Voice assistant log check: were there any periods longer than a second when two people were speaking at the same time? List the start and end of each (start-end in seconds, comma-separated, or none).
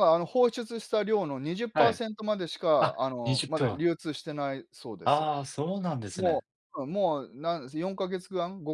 2.8-4.3